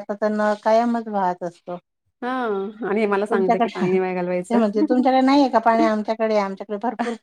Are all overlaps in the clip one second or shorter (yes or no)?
no